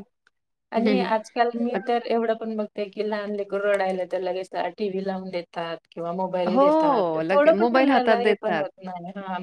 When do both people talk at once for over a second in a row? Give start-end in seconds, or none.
6.5-8.6